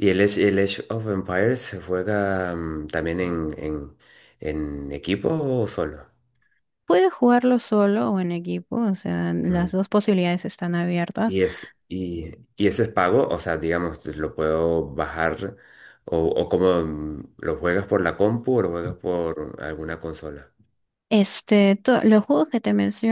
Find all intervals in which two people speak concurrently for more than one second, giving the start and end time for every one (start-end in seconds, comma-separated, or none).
none